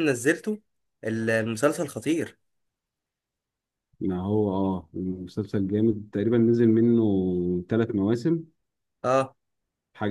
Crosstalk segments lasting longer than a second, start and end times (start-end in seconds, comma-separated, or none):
none